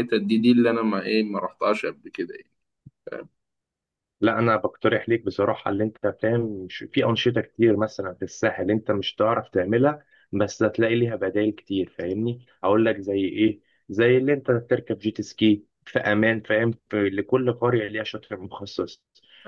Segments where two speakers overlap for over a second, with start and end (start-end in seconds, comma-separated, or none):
none